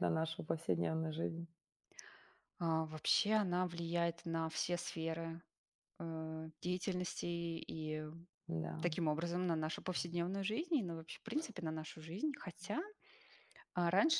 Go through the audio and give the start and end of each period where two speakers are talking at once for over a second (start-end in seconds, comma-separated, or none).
none